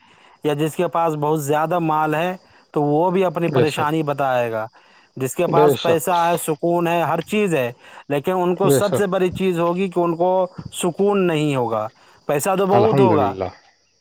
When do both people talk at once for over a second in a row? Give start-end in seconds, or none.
none